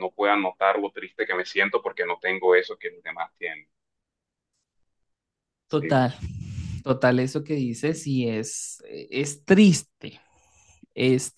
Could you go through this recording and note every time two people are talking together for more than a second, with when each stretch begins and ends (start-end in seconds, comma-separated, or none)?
none